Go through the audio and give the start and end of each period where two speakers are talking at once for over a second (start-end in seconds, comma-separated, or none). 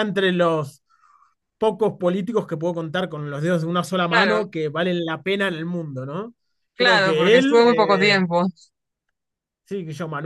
6.8-8.2